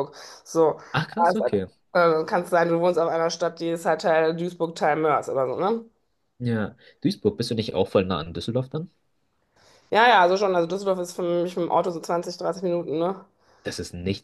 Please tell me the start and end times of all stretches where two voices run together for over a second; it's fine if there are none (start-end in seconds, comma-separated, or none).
none